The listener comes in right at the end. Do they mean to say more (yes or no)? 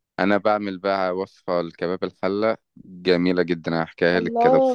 yes